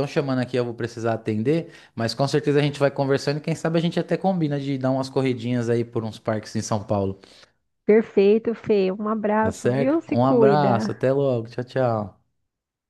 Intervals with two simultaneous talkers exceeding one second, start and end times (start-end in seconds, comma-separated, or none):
9.4-10.9